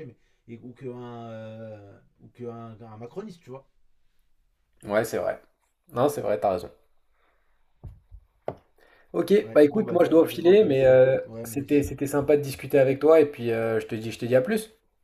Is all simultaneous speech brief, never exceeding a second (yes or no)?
no